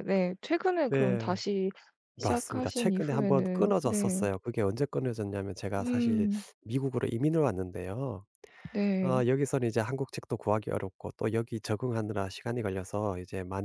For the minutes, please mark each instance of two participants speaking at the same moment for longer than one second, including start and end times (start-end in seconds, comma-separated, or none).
2.2-4.2